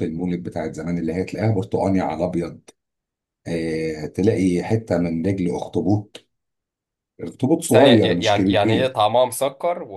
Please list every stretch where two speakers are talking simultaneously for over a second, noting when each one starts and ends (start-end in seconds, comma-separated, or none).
7.7-8.9